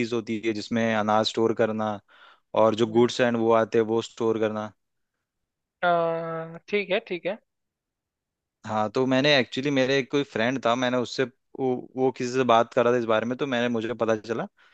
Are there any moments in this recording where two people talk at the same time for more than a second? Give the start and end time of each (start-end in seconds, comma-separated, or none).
none